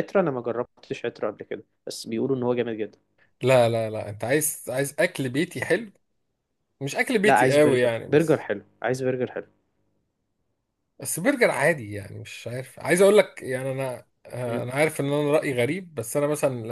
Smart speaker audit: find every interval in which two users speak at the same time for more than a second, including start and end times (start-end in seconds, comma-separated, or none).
7.2-8.4